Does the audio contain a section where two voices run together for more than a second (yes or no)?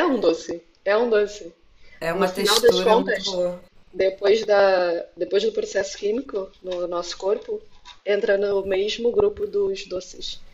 yes